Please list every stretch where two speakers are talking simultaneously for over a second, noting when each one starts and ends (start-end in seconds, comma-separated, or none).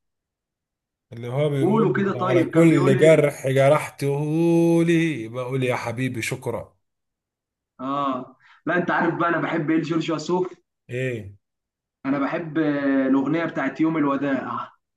1.6-3.3